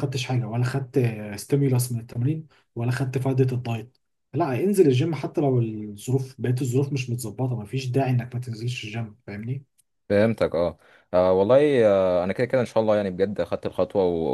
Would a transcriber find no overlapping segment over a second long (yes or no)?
yes